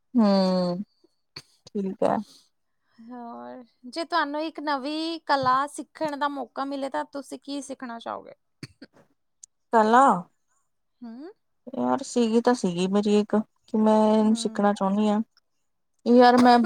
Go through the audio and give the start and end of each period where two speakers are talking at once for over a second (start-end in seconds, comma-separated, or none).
none